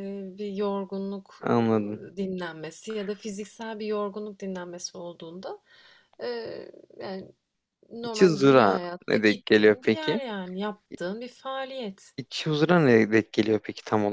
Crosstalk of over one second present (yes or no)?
yes